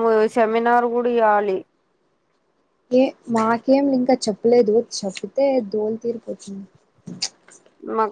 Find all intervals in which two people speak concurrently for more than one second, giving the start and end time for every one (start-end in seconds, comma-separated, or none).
none